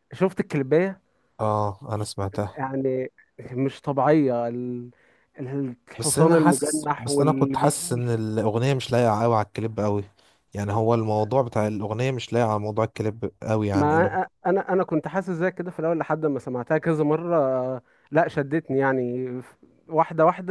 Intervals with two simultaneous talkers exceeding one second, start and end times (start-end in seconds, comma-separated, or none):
6.0-8.1